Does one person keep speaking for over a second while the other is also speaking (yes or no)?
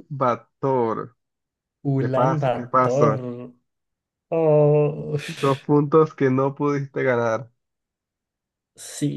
yes